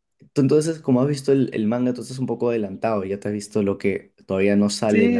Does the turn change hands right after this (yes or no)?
yes